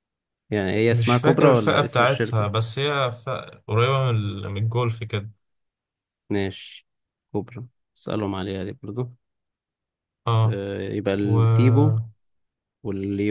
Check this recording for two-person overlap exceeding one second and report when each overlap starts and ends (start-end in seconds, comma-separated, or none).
0.9-2.5